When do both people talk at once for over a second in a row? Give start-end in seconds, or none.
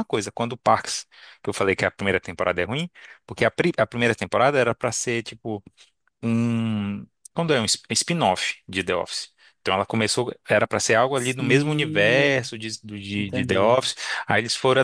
11.1-12.5